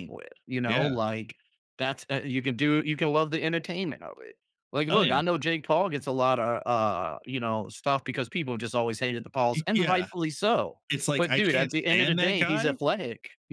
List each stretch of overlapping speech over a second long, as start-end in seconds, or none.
11.2-12.8